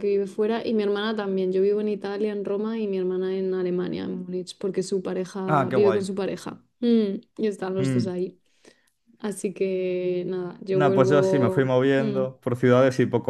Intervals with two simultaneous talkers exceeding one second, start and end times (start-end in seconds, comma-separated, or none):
10.7-12.2